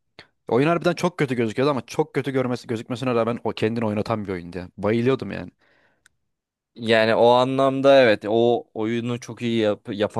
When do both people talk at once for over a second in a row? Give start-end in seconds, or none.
none